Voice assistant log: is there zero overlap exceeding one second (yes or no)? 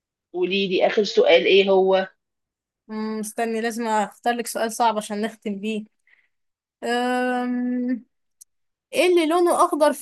yes